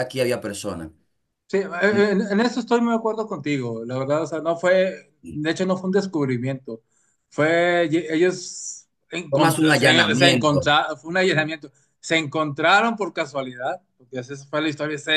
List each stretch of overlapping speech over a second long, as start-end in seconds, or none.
9.3-10.7